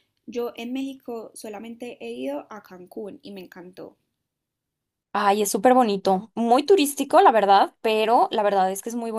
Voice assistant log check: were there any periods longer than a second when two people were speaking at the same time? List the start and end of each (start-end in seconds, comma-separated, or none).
none